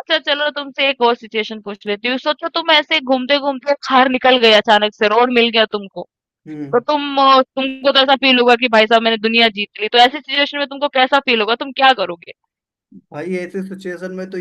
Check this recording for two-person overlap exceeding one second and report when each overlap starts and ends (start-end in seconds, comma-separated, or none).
none